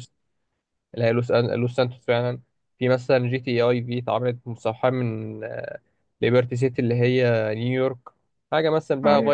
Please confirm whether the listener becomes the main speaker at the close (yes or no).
no